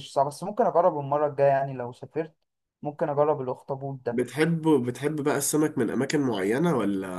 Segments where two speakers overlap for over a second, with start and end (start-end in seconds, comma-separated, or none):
none